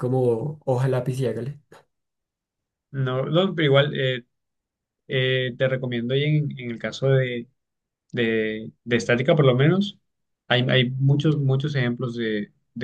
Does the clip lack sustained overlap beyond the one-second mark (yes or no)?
yes